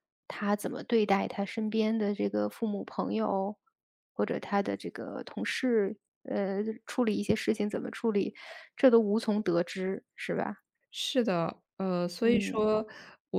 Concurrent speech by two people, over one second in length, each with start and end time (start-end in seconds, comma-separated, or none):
none